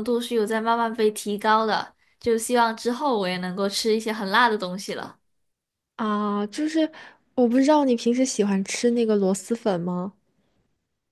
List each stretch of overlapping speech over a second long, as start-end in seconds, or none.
none